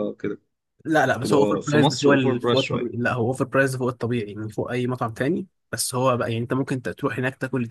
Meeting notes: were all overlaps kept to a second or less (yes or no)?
no